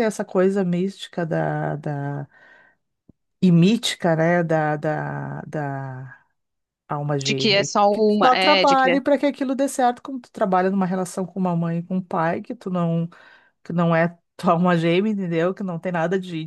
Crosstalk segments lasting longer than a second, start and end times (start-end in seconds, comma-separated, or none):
7.2-9.0